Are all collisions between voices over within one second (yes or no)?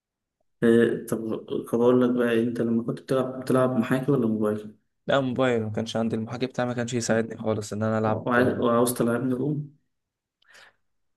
yes